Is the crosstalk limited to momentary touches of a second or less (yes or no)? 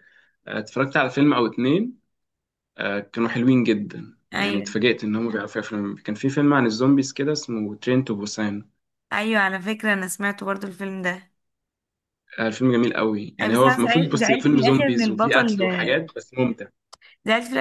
no